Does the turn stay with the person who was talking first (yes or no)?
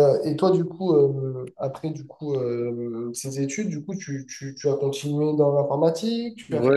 no